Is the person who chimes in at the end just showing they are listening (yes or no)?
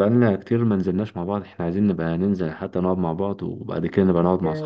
no